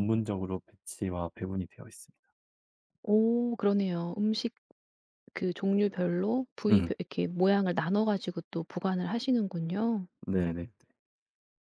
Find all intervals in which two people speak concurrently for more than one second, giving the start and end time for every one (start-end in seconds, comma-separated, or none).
none